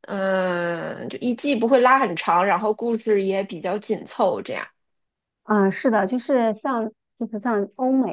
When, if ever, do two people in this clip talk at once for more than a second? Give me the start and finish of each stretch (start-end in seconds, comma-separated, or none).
none